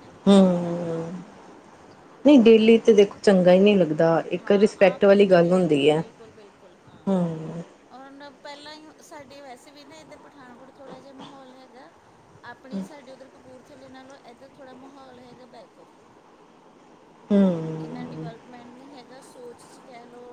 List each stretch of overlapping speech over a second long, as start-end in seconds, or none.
4.4-6.0